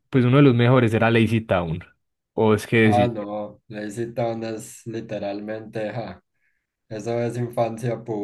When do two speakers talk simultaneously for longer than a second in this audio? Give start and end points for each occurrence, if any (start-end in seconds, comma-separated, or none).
none